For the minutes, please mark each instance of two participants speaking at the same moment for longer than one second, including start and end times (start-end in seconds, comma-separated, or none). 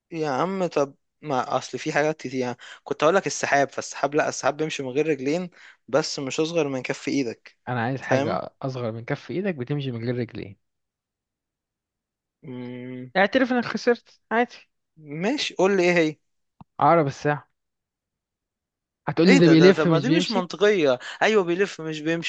19.3-20.5